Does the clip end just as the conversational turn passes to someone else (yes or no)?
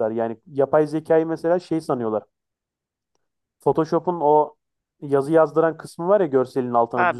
yes